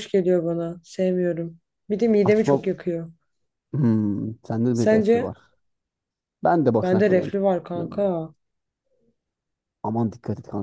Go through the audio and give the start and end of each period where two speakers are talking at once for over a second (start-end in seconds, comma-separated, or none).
6.8-8.1